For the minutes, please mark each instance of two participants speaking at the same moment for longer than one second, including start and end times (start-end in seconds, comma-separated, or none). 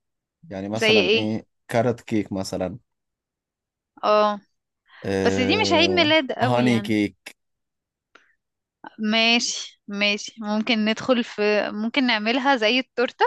5.2-6.9